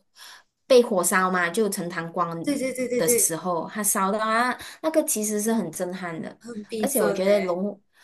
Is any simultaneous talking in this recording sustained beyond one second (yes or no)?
no